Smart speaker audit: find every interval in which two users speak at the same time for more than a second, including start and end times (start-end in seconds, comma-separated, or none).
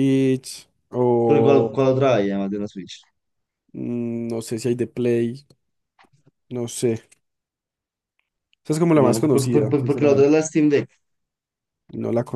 8.9-10.3